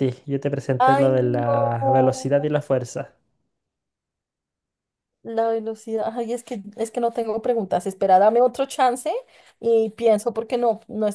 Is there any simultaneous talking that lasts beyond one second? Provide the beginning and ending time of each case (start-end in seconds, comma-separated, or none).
0.8-2.5